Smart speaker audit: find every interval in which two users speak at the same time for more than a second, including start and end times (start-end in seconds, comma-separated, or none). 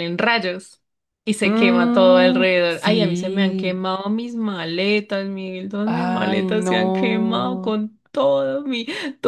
1.4-3.8, 5.8-7.8